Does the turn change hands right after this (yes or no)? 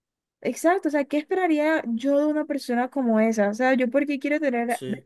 no